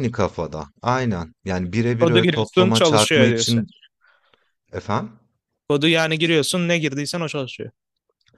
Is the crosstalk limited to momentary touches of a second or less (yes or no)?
no